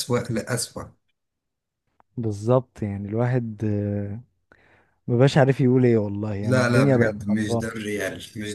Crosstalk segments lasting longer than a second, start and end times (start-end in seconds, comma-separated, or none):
6.4-7.7